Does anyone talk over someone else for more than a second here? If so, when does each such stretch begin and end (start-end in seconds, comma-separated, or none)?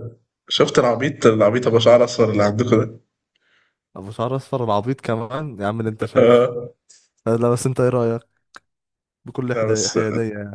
none